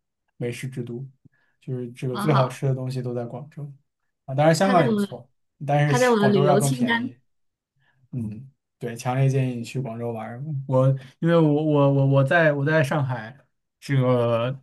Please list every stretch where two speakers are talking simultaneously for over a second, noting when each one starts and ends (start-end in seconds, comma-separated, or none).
5.9-7.1